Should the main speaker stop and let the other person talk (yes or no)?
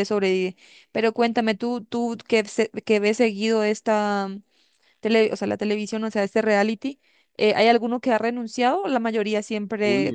yes